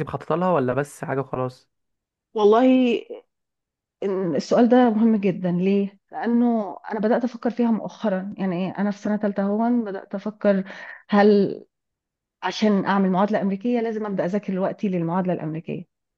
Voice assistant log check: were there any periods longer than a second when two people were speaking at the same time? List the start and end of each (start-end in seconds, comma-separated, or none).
none